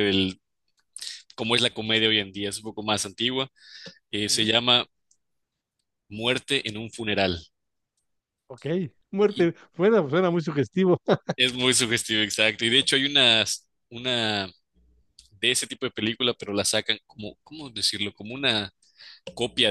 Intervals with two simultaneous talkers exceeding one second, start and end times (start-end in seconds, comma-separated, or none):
none